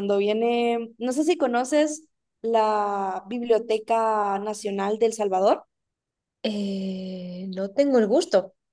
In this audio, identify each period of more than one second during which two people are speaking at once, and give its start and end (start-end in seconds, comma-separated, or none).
none